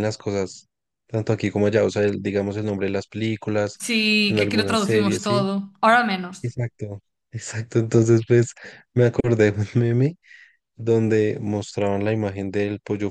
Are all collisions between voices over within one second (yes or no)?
no